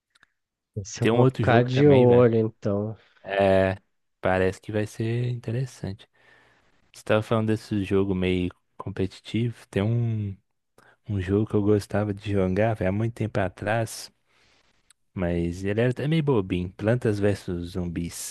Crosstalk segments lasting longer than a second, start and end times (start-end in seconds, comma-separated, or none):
1.0-2.3